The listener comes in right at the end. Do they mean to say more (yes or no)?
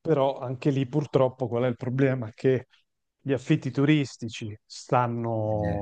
no